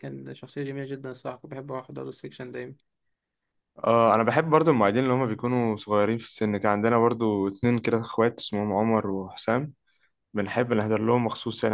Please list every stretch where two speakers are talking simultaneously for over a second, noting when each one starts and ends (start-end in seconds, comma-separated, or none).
none